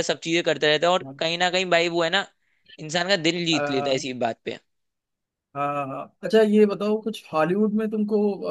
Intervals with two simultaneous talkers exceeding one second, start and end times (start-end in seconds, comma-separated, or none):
none